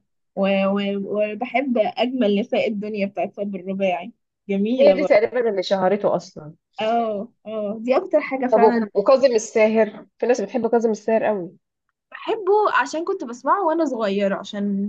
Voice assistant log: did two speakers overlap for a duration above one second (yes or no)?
no